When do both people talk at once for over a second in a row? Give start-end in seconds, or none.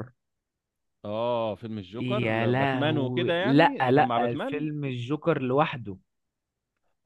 1.9-4.7